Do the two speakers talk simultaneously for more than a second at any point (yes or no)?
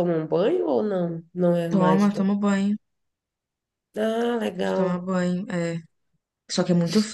no